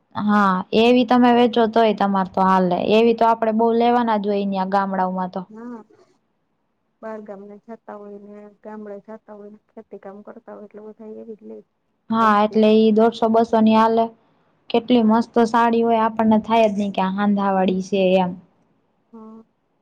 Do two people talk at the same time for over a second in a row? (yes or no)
no